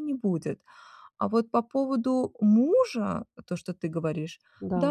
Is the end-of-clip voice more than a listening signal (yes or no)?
no